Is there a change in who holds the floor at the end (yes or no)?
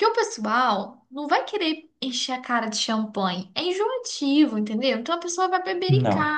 no